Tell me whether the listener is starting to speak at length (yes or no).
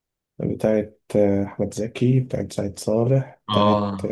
no